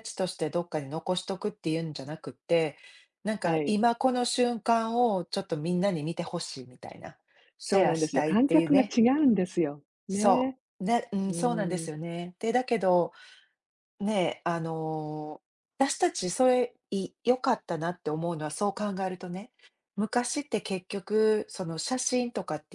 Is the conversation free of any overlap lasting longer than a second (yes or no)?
no